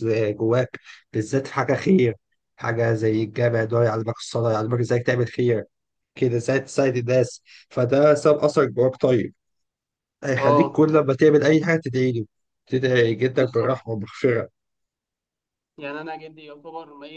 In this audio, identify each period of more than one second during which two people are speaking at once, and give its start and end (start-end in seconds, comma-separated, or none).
none